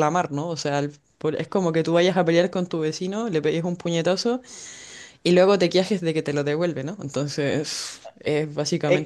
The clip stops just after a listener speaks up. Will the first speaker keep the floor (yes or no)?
no